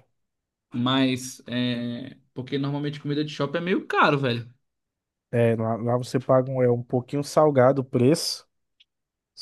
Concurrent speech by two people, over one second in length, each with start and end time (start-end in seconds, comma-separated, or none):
none